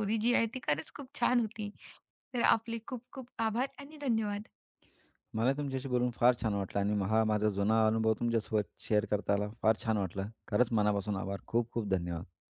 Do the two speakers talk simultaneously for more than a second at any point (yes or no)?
no